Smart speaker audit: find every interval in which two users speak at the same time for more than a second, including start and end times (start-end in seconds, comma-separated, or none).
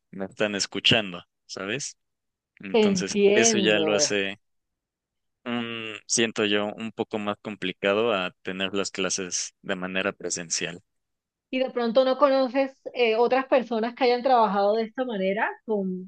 2.7-4.2